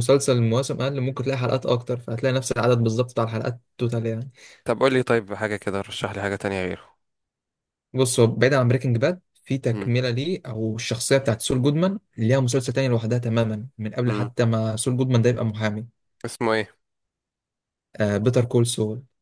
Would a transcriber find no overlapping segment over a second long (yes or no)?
yes